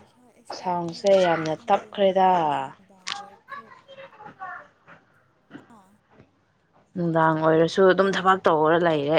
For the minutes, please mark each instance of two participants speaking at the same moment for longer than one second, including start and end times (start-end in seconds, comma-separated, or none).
0.6-2.3